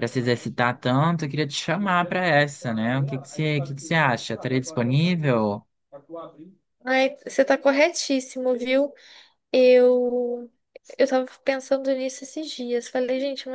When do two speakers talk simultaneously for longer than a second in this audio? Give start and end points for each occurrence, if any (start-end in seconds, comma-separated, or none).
none